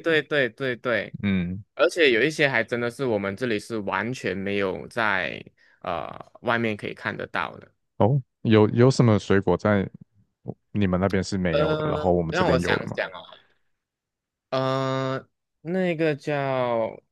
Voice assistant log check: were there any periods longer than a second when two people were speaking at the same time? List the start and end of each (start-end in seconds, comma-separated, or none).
11.5-13.0